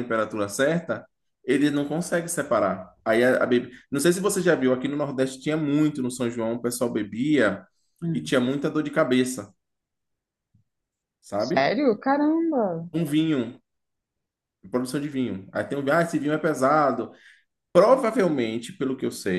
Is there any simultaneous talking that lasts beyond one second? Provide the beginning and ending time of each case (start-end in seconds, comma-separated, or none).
none